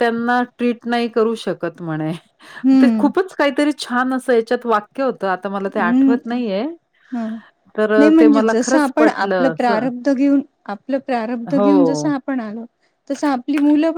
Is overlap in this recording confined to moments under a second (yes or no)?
no